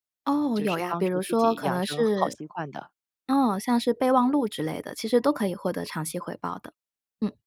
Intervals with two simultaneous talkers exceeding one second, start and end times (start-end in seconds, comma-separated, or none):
0.6-2.4